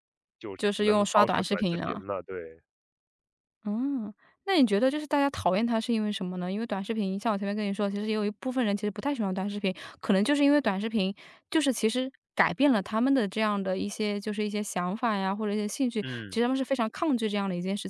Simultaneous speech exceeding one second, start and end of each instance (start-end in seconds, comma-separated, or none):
0.6-2.0